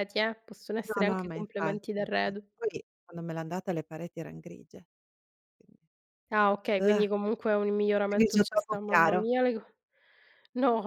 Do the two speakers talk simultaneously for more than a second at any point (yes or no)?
yes